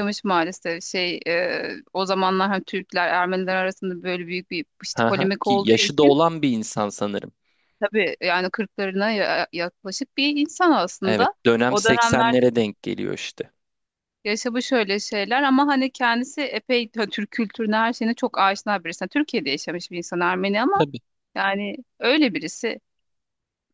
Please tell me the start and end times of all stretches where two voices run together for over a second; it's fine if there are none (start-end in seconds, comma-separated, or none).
4.9-6.2, 11.0-12.5